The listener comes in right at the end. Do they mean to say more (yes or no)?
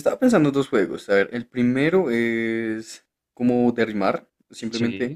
no